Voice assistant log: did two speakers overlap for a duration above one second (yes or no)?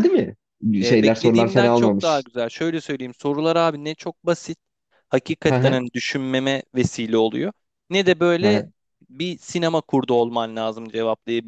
yes